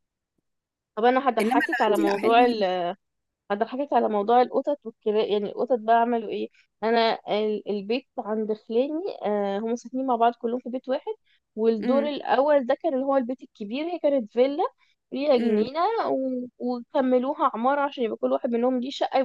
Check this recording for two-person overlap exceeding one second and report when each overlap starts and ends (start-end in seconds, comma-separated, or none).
1.4-2.6